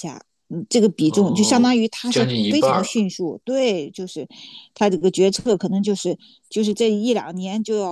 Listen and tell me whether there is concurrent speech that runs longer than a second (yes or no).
yes